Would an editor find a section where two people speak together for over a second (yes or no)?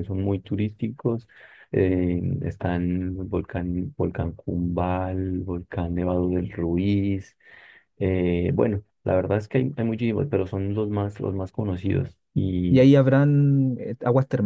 no